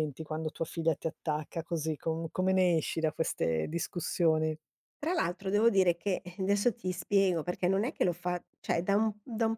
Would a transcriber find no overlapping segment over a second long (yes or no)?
yes